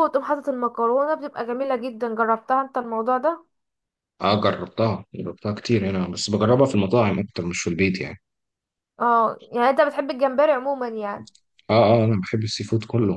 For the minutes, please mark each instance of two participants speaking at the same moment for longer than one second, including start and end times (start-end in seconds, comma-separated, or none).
none